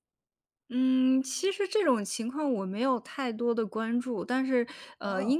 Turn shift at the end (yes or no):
no